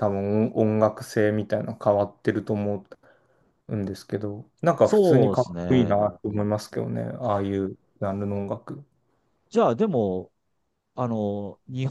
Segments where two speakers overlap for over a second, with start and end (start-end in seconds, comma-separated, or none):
4.8-6.5